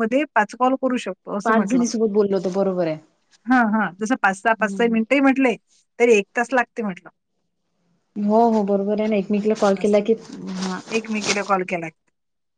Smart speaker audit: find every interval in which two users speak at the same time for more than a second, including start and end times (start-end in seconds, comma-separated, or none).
none